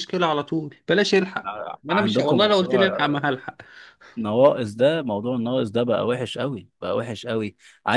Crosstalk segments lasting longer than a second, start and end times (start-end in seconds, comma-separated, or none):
1.9-3.2